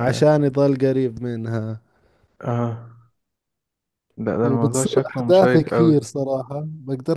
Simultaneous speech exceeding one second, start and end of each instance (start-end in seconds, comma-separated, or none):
4.4-6.1